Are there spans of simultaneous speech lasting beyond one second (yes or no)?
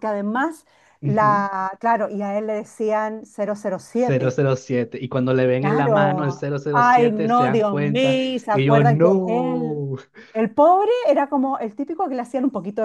yes